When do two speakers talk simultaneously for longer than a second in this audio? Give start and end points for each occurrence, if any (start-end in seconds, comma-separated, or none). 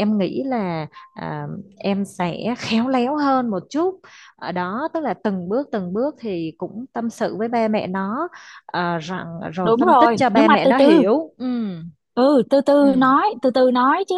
9.6-11.1